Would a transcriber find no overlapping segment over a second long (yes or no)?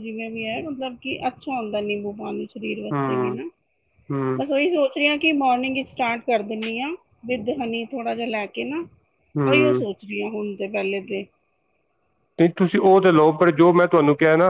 yes